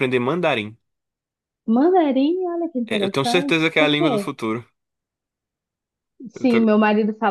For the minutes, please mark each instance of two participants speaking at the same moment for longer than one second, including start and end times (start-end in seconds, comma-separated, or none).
2.9-4.3